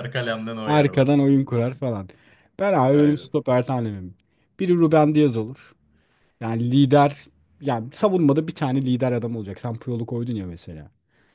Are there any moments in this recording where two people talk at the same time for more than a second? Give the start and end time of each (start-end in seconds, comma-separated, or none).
none